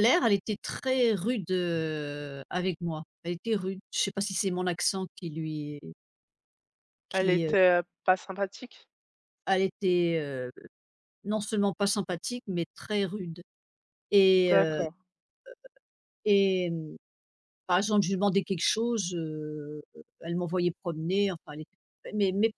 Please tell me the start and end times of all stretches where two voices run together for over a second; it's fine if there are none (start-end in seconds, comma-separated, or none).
none